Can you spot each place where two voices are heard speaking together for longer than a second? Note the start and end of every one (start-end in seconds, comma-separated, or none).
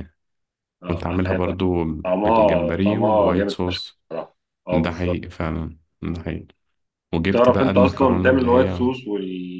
2.2-4.0, 7.2-8.9